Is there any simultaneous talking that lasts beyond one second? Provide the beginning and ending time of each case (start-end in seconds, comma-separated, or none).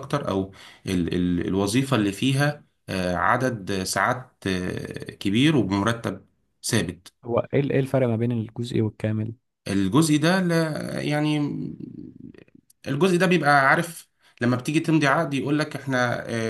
none